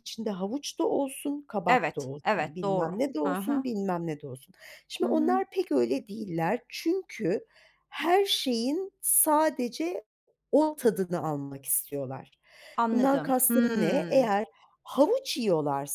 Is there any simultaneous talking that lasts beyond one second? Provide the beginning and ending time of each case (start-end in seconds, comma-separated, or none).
1.7-3.7, 12.9-14.3